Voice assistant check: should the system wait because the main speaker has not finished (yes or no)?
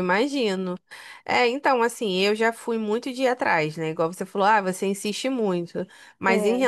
yes